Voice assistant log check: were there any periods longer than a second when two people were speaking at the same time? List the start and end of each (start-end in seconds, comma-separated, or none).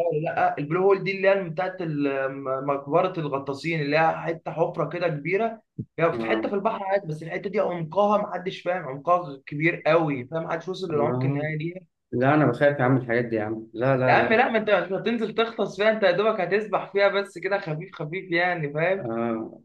none